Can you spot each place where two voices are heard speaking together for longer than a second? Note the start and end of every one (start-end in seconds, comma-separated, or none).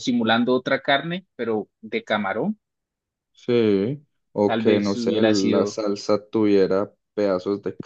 4.5-5.8